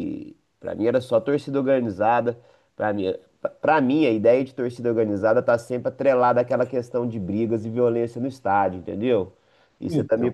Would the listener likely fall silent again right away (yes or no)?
yes